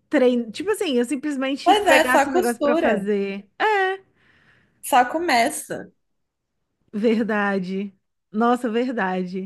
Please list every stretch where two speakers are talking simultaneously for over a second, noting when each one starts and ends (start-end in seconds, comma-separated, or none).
1.6-3.1